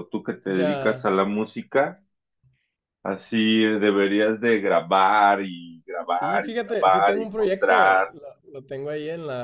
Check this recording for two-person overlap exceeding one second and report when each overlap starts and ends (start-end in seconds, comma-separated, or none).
6.1-8.1